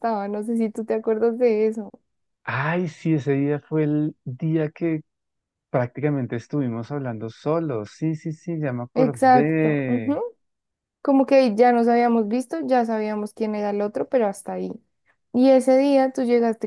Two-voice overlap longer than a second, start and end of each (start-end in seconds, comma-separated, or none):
8.9-10.2